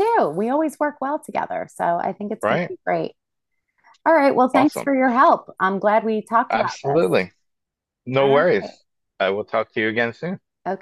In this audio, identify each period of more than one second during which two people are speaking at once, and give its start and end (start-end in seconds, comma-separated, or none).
none